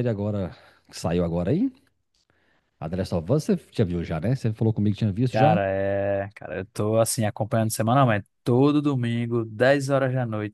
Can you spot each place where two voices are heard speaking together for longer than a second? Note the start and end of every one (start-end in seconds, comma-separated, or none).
none